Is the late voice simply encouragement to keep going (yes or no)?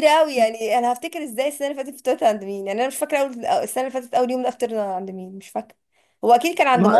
no